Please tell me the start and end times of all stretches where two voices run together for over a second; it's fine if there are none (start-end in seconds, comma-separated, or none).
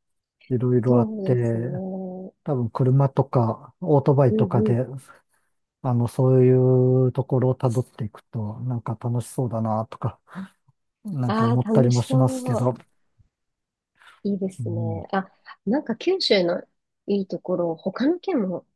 11.3-12.7